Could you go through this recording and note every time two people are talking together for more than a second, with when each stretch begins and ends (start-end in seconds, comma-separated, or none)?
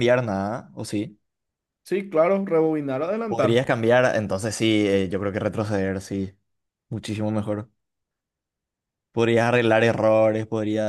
none